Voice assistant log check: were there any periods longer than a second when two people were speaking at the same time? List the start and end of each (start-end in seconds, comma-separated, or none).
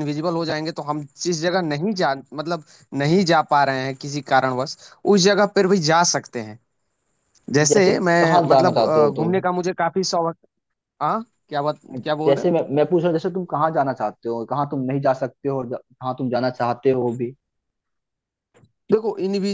7.7-9.3